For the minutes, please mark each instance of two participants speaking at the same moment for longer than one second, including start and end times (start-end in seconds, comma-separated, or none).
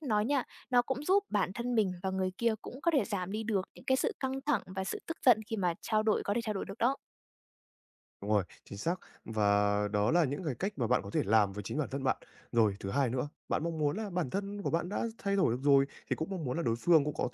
none